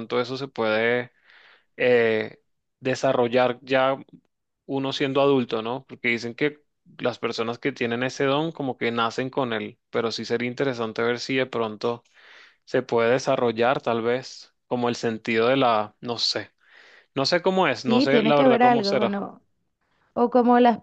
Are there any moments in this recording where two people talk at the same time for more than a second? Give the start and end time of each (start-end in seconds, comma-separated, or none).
17.9-19.1